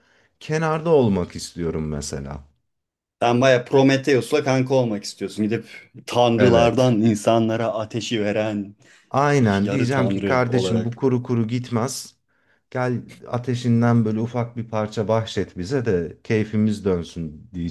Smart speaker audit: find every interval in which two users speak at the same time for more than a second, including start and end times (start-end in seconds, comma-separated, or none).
9.6-11.0